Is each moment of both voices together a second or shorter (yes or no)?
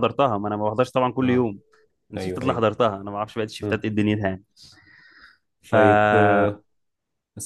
yes